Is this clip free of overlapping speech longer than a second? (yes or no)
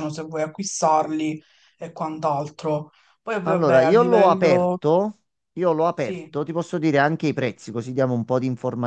no